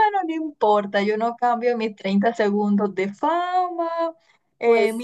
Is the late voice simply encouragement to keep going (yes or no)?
yes